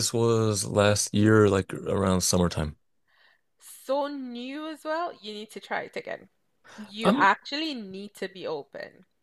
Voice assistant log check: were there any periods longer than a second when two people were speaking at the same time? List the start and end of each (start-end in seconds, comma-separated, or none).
none